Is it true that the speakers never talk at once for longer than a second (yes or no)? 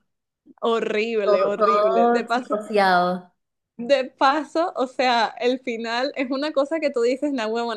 no